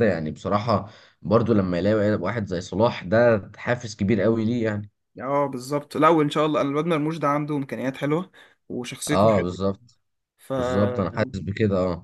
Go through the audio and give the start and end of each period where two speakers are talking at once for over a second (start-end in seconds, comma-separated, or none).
none